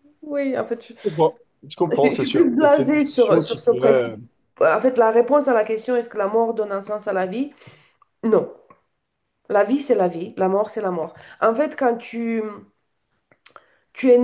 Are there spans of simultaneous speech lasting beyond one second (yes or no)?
yes